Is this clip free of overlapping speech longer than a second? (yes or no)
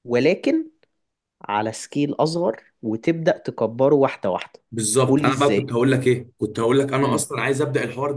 yes